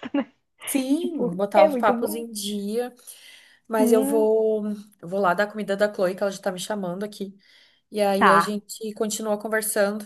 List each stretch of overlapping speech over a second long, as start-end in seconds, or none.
1.0-2.2